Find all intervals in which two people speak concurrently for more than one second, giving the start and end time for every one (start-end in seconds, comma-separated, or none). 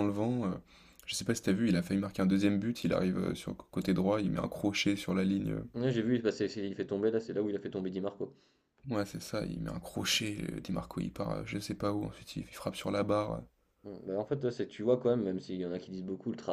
none